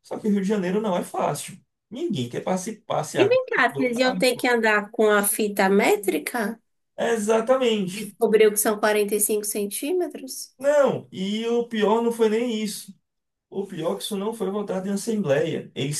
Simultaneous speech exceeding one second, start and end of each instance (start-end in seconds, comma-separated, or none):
3.1-4.5